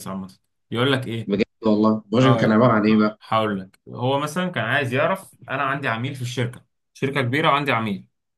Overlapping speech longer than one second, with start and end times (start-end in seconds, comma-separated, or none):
none